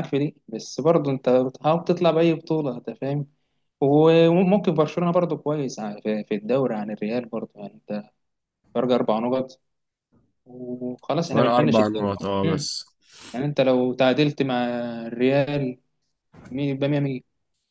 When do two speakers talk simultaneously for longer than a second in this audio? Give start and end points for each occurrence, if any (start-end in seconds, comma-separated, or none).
11.2-12.7